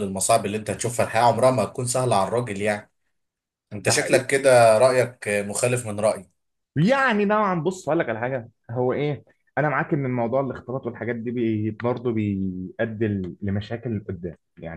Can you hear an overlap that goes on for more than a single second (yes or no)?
no